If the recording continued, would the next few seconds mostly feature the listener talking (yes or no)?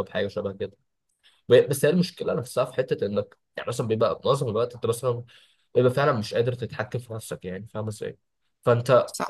no